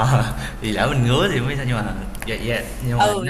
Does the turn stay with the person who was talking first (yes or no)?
no